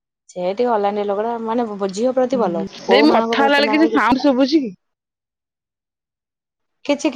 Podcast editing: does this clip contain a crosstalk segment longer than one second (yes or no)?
yes